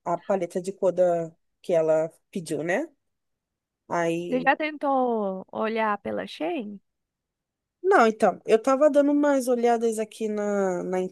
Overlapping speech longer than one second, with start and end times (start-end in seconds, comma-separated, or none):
none